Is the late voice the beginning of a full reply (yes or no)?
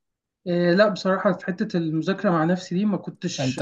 no